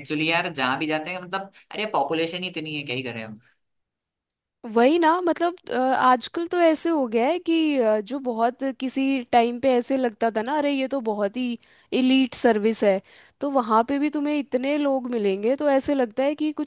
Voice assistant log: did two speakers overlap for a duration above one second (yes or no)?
no